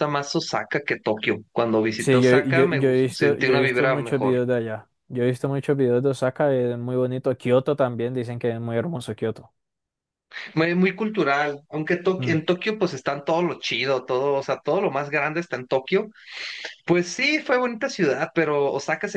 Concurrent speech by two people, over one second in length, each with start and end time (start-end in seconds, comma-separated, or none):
1.9-4.4